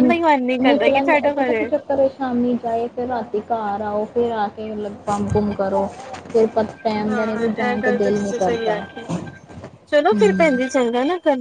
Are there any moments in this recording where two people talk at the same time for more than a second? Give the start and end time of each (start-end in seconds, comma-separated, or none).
7.1-9.0